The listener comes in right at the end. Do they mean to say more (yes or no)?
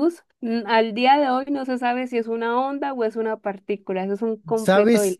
yes